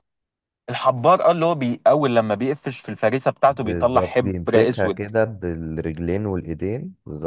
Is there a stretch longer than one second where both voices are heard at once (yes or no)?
yes